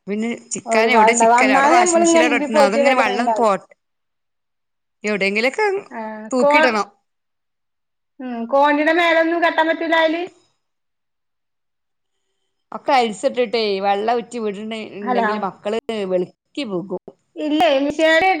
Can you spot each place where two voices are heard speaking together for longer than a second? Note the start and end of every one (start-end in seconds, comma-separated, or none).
0.7-3.5